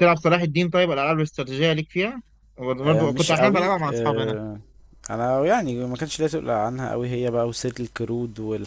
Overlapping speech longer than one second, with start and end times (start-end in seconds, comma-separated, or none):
2.8-4.3